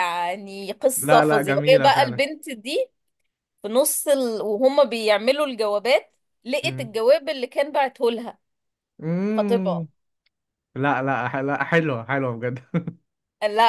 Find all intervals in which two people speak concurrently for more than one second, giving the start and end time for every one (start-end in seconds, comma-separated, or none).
1.0-2.2